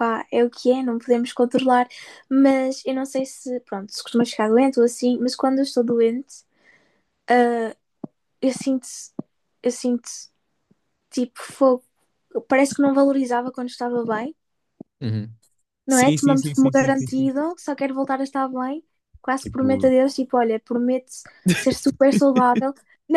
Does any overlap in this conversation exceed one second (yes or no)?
yes